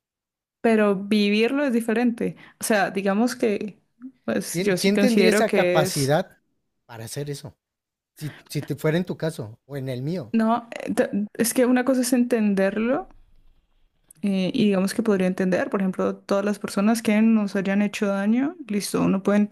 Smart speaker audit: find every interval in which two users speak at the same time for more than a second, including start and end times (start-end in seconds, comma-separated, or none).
4.5-6.2